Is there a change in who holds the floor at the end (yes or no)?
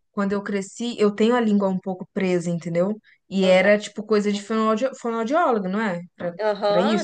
yes